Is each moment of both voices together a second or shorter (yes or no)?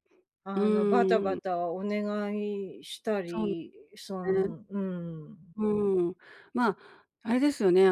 yes